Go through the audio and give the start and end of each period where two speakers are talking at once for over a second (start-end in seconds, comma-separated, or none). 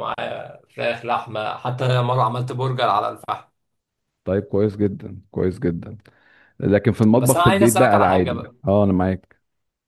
7.2-8.5